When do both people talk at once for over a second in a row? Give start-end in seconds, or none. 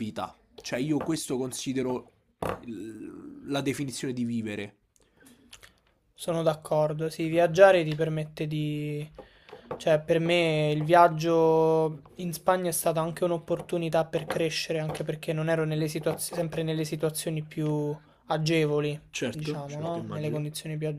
19.1-20.5